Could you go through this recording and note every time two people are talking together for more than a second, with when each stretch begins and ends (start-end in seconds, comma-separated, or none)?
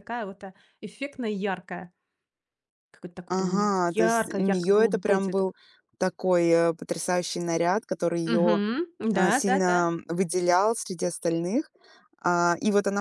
3.3-5.5